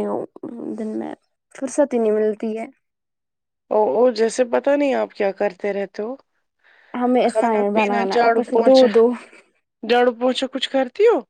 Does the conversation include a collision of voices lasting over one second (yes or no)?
yes